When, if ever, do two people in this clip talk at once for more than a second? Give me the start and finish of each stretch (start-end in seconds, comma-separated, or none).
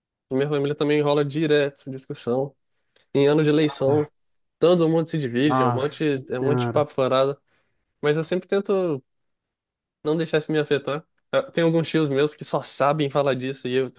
5.4-6.9